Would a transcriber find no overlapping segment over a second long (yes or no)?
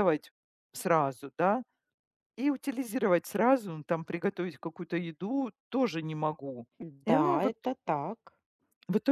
yes